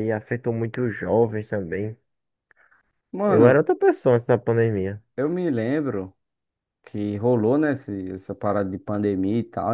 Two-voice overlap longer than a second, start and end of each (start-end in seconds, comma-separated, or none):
none